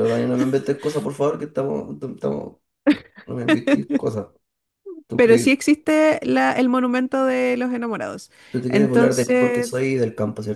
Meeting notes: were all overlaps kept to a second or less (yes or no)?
no